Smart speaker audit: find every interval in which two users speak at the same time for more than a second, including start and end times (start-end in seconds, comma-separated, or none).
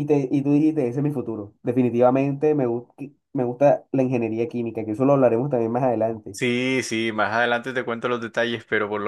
none